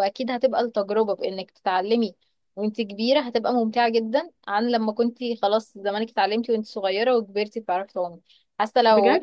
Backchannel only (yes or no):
yes